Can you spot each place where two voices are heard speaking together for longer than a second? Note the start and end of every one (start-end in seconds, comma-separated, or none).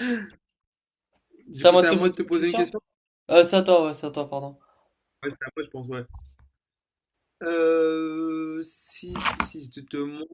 1.5-2.8